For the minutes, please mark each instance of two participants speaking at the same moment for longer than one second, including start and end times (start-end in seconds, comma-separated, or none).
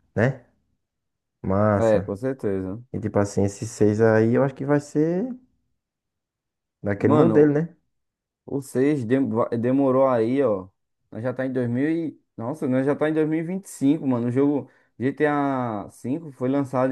none